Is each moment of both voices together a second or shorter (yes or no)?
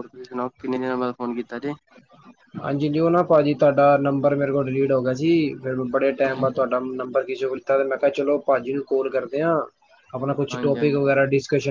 yes